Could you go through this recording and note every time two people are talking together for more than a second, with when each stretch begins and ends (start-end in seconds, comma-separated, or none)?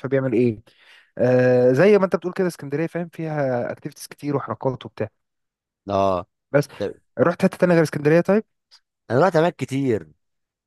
none